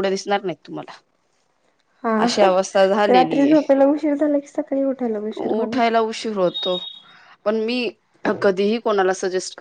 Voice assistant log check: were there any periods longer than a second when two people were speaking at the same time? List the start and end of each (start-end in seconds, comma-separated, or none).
none